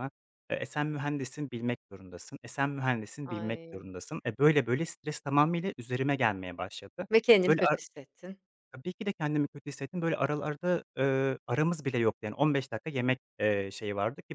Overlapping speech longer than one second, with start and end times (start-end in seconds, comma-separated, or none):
none